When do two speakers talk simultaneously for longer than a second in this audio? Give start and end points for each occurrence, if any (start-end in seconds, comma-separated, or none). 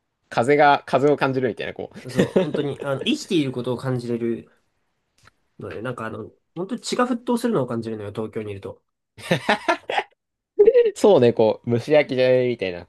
none